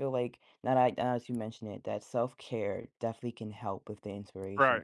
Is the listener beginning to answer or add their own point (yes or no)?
no